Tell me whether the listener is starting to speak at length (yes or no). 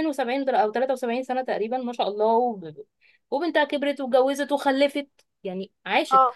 no